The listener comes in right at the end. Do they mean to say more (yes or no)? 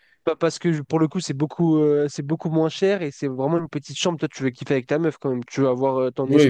yes